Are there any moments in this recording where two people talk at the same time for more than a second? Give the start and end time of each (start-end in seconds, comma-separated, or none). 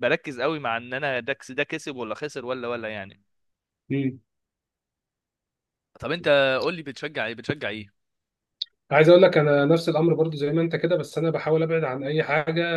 none